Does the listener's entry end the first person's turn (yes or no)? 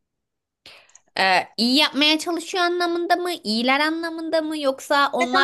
yes